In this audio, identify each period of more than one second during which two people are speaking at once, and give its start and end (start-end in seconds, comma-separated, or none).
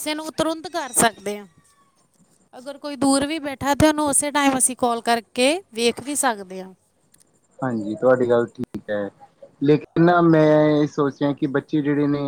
none